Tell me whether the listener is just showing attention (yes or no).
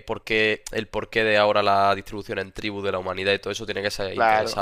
no